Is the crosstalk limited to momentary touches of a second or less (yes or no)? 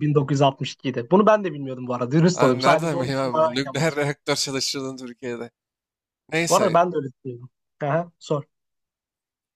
no